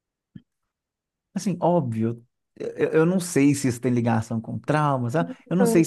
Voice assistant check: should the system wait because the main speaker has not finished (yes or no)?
yes